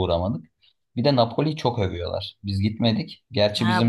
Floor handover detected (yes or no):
yes